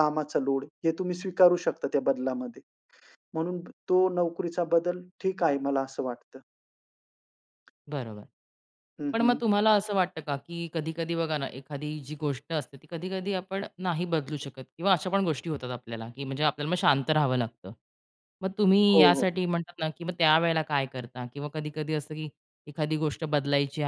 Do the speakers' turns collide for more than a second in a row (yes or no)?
no